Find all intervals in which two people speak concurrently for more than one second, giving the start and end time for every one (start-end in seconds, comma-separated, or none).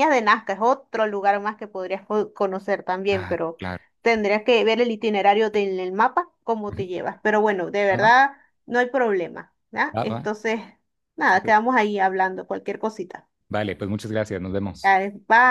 none